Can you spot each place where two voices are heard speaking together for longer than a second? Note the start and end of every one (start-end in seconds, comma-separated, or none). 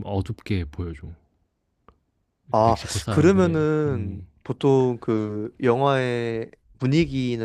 2.5-4.3